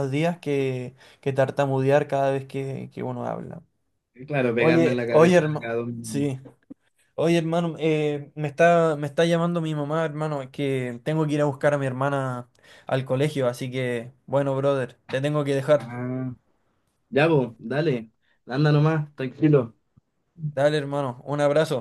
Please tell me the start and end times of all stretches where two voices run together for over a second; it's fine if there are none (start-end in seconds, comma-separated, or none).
4.6-6.3